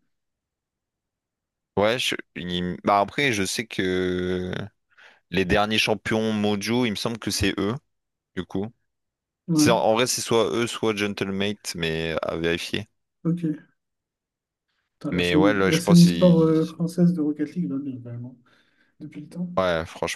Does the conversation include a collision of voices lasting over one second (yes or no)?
yes